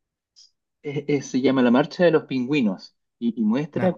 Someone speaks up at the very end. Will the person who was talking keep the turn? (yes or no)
yes